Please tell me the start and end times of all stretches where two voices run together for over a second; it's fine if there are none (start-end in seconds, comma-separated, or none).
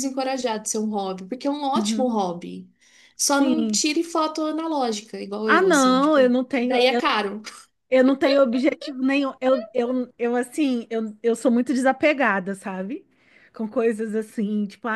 5.5-6.8